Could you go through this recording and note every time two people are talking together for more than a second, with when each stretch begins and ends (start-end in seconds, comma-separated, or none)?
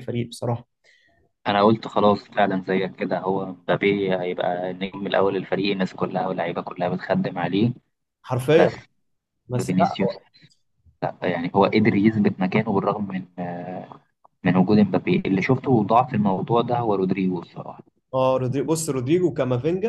none